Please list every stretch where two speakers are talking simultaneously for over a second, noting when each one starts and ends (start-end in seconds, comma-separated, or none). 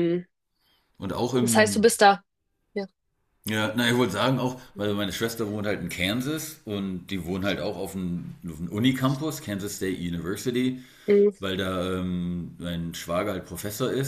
none